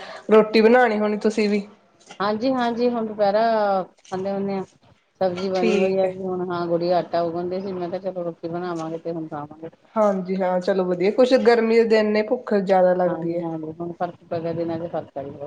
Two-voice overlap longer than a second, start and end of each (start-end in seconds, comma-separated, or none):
none